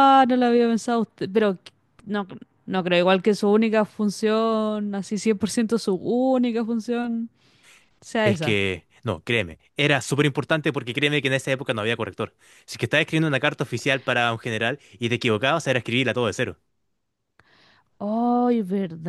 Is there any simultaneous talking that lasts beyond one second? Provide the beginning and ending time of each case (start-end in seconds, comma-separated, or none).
none